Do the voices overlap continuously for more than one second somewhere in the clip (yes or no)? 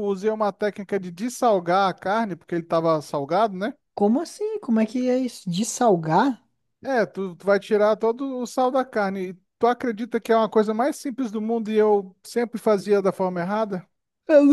no